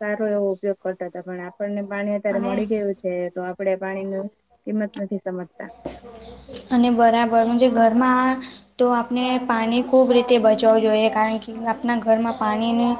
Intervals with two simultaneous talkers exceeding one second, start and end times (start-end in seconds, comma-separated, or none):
none